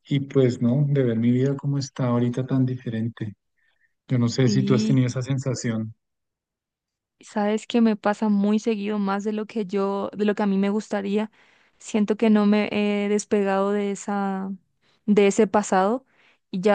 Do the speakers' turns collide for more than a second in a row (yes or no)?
no